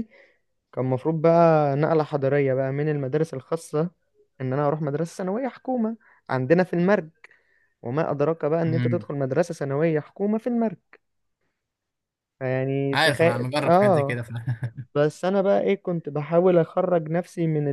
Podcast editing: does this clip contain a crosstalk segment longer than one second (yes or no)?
yes